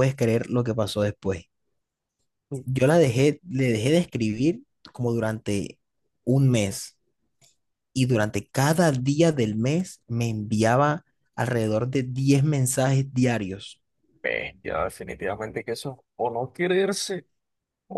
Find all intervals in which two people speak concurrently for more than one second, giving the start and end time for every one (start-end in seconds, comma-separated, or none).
none